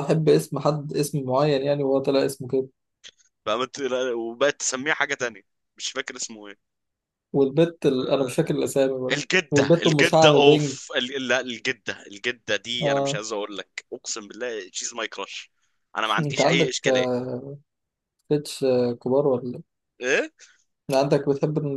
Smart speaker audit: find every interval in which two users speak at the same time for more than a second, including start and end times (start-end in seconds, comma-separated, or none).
9.1-10.8